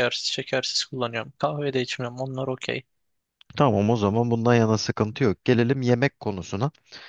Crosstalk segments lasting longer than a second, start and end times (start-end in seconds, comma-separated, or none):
none